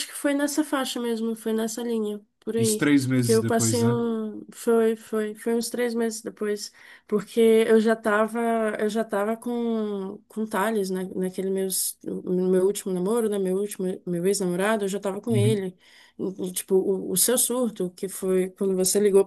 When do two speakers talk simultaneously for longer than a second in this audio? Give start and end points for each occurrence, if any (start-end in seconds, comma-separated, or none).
2.6-4.0